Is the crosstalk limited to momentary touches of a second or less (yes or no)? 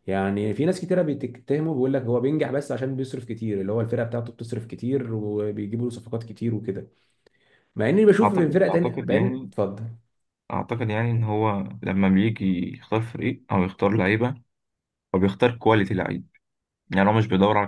no